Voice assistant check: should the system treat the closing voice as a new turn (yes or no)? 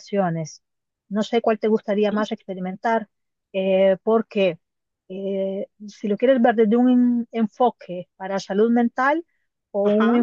no